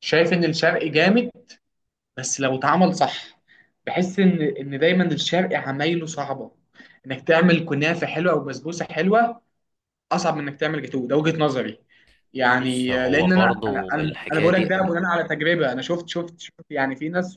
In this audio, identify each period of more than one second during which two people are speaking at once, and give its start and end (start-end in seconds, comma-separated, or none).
12.5-14.9